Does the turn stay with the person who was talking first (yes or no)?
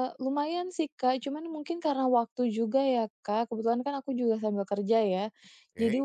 yes